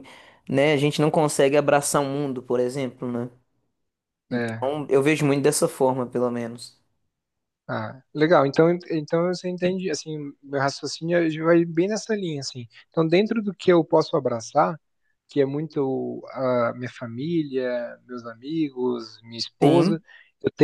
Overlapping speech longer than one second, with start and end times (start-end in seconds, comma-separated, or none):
none